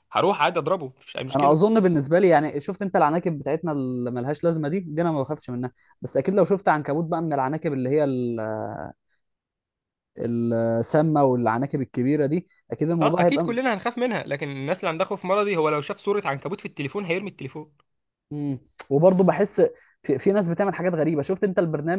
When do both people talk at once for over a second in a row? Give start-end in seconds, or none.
none